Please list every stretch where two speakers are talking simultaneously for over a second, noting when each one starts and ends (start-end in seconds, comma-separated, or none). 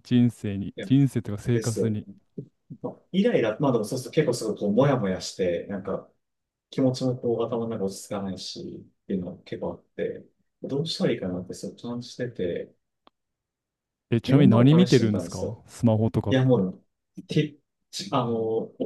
14.3-15.6